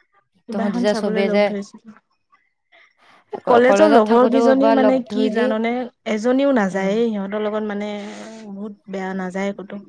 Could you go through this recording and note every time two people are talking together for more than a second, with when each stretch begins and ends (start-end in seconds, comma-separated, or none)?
3.5-5.5